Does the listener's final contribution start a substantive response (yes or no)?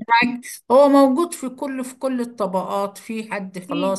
no